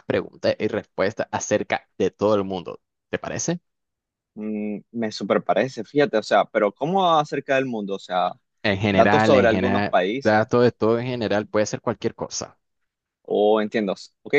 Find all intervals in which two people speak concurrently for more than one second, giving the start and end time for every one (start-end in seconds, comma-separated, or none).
8.9-10.5